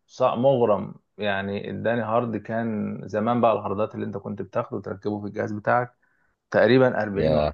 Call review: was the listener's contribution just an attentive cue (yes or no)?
yes